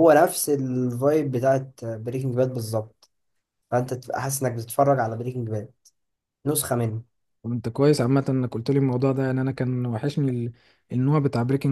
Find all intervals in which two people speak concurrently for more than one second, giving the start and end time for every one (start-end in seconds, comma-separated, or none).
none